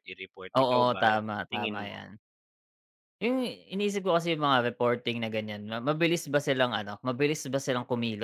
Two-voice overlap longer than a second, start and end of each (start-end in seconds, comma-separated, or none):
0.6-2.1